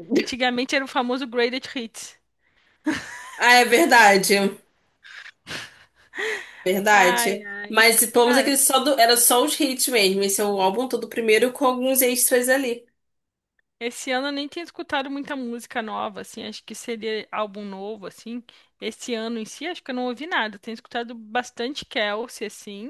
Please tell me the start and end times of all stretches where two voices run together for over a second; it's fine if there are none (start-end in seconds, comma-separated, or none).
none